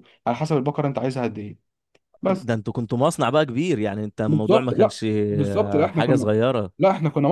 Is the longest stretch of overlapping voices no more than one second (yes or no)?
no